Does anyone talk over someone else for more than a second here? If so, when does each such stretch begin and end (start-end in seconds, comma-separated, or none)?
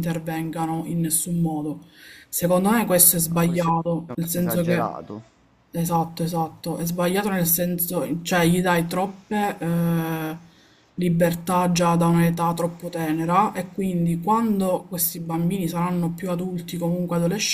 3.3-4.9